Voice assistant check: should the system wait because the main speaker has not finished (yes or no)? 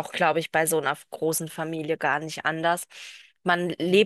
yes